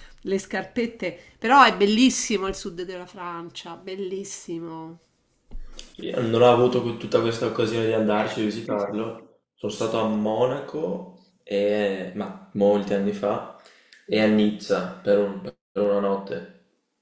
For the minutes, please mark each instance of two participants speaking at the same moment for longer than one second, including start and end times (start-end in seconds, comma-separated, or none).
none